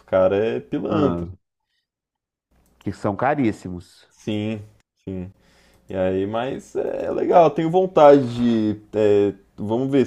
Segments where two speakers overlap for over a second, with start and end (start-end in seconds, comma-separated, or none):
none